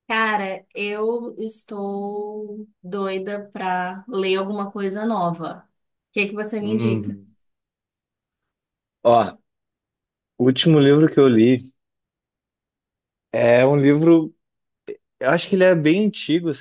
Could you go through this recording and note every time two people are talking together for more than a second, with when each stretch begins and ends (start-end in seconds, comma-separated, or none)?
none